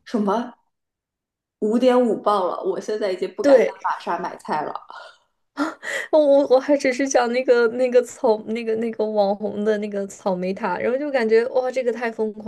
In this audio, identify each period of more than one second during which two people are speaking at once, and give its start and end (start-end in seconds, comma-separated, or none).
none